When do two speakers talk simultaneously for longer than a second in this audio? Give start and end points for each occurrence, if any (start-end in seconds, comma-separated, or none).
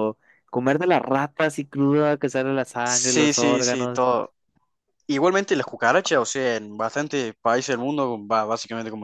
2.8-4.1